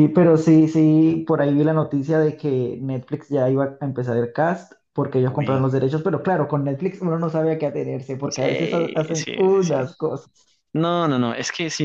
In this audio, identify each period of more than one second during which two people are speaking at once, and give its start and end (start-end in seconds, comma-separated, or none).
8.3-9.8